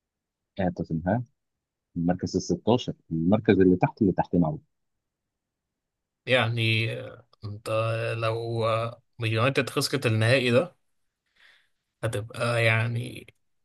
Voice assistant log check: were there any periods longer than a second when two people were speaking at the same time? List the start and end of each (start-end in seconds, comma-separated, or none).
none